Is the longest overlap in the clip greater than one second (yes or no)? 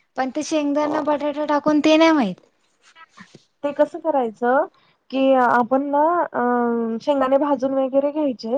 no